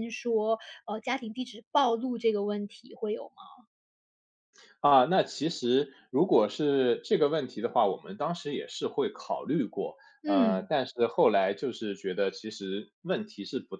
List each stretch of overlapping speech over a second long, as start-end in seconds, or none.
none